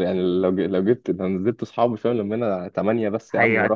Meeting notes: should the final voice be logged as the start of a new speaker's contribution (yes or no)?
no